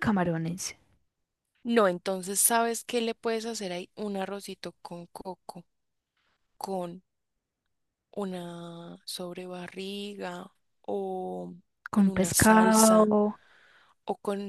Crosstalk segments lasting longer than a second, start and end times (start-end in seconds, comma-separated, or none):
11.9-13.1